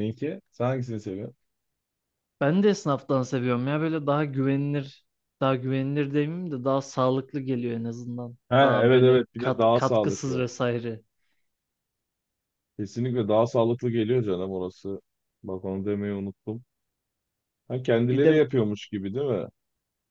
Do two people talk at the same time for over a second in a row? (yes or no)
yes